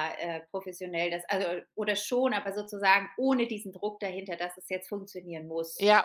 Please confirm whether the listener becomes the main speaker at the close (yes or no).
yes